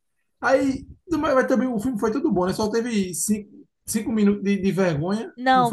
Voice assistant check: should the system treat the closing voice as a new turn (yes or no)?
yes